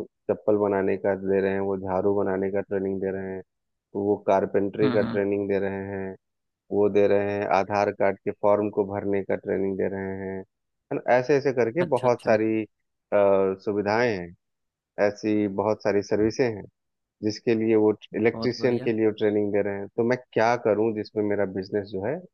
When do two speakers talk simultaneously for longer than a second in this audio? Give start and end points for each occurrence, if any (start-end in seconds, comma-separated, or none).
none